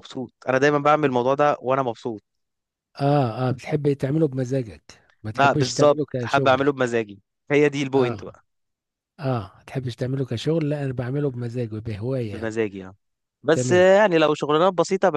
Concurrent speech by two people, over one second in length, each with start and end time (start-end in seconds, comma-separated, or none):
5.3-6.6